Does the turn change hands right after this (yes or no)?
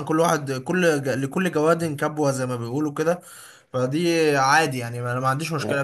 yes